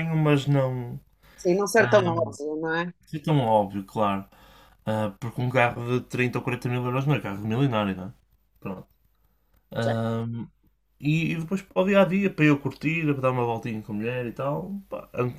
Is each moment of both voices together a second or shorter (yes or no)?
yes